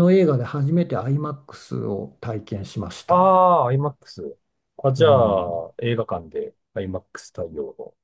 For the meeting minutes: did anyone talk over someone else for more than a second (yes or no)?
no